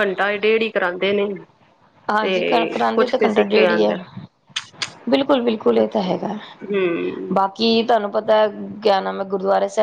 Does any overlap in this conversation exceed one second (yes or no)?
yes